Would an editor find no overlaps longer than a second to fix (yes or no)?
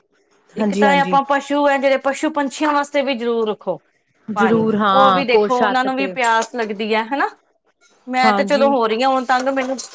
no